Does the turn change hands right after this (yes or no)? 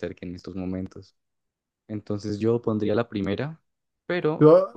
no